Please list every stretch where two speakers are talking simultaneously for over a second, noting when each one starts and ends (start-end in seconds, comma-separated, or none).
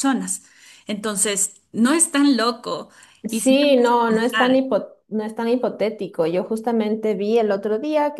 3.3-4.6